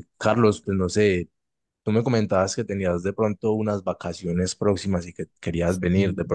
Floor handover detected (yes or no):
no